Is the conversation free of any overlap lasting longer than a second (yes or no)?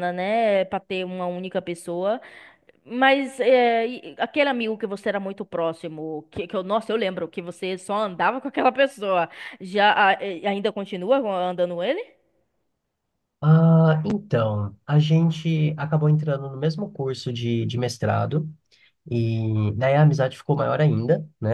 yes